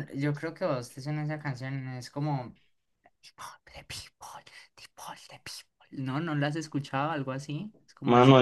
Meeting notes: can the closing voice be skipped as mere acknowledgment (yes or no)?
no